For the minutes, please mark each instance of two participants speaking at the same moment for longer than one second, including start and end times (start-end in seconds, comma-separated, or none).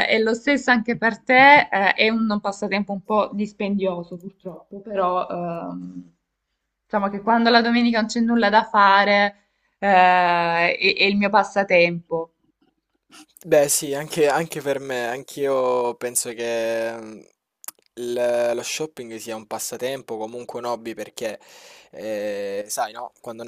none